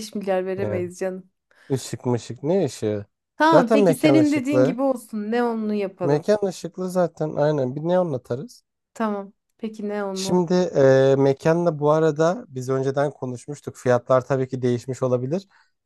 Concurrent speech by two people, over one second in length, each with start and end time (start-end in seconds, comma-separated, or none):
3.5-4.8